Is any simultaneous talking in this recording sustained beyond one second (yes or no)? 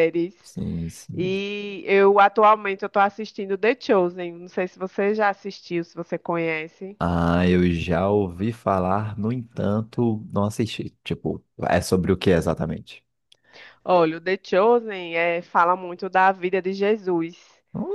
no